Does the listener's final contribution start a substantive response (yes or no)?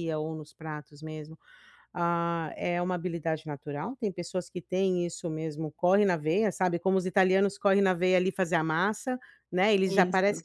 no